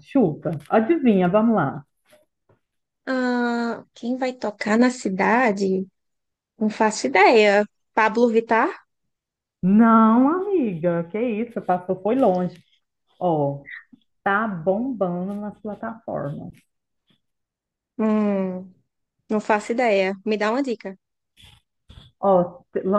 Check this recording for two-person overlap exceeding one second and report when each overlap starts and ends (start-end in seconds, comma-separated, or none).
none